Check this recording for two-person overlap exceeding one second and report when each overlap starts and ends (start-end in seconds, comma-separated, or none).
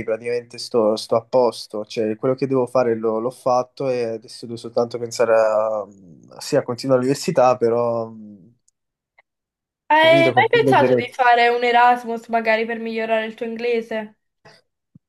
9.9-11.2